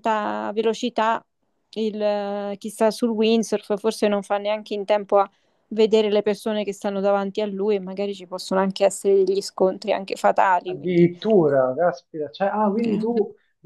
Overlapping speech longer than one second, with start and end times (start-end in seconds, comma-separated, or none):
none